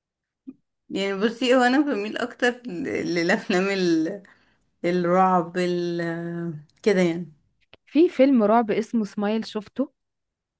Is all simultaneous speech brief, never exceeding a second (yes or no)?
yes